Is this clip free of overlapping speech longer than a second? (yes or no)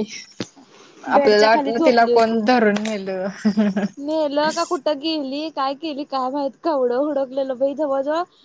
no